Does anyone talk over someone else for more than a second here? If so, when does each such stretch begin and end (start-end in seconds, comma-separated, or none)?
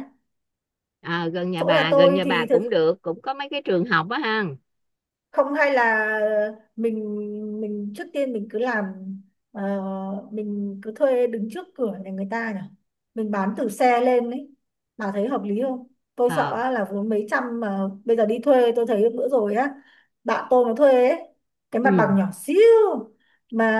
1.6-2.8